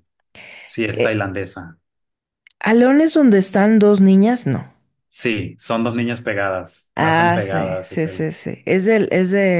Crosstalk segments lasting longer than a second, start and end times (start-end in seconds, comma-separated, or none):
7.0-8.3